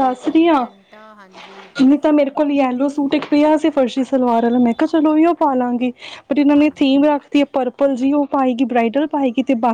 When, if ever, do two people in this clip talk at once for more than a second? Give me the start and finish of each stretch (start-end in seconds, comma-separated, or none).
none